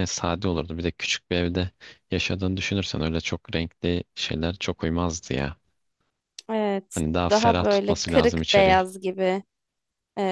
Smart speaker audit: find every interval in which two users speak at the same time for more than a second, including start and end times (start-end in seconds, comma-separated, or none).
6.9-8.8